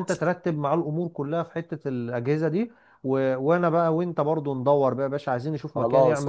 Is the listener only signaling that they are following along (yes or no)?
no